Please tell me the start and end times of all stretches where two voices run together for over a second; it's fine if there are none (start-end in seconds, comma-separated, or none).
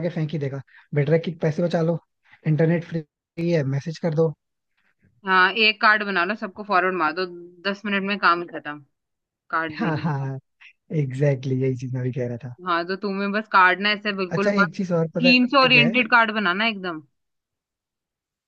14.3-16.0